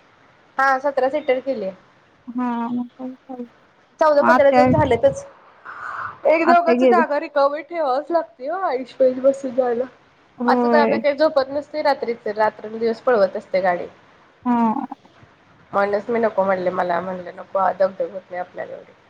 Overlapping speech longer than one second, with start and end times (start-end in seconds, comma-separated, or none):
none